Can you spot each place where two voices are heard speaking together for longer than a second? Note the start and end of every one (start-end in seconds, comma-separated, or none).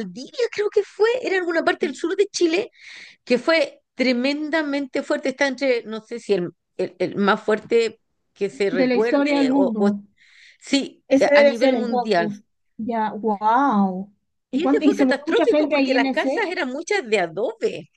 8.7-9.9, 11.1-12.3, 14.5-16.5